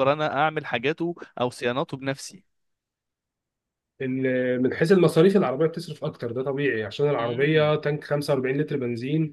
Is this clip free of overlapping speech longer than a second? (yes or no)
yes